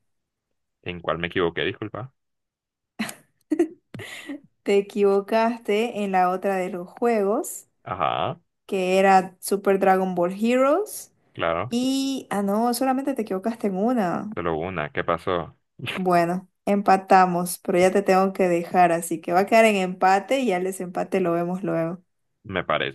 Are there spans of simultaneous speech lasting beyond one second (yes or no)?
no